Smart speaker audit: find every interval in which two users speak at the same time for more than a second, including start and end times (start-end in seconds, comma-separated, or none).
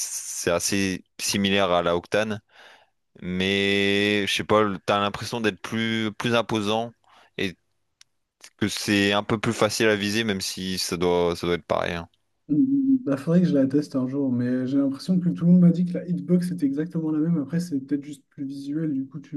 none